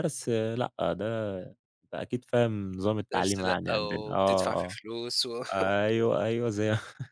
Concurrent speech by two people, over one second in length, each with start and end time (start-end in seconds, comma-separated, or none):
3.1-4.8